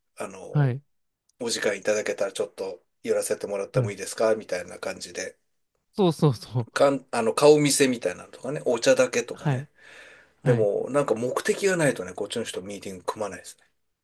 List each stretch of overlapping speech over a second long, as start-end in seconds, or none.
none